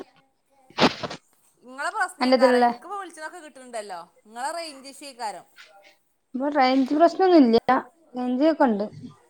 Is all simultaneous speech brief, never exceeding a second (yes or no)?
yes